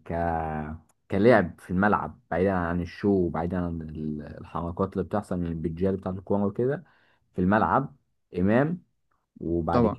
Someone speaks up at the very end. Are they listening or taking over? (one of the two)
listening